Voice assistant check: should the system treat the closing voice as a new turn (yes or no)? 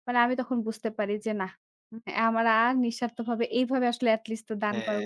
yes